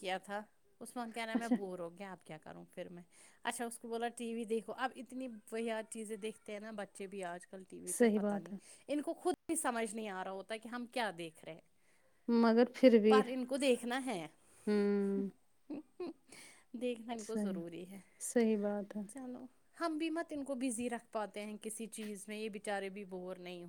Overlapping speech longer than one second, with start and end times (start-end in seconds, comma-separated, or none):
none